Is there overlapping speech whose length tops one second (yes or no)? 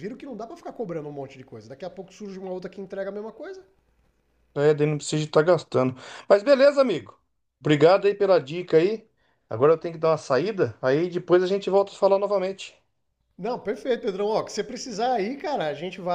no